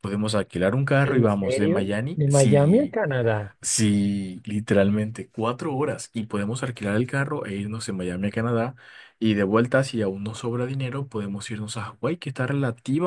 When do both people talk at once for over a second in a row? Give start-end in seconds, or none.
1.0-3.0